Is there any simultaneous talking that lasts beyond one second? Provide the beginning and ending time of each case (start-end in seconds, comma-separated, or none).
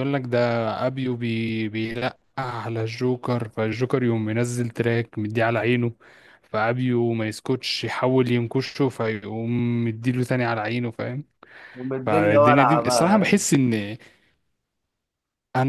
12.1-13.3